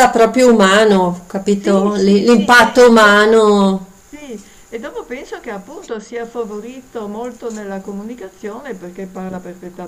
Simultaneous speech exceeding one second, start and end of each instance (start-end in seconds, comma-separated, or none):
1.5-3.3